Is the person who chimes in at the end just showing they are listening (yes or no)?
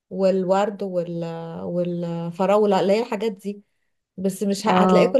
yes